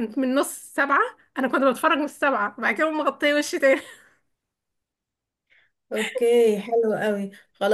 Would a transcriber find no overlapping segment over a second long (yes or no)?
yes